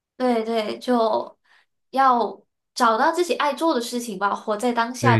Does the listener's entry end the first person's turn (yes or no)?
yes